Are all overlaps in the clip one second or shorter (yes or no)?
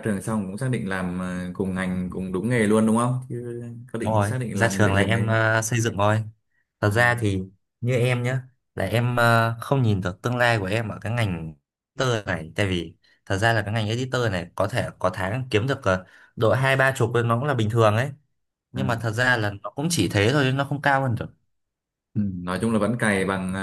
no